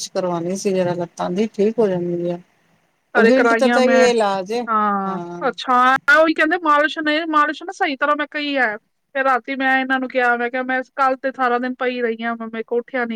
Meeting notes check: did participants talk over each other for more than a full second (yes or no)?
no